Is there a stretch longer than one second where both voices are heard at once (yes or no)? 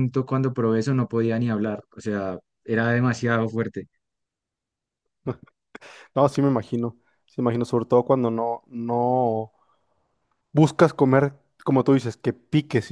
no